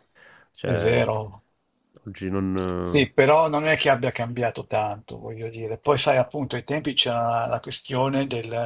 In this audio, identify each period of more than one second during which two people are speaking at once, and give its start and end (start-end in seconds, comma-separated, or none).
none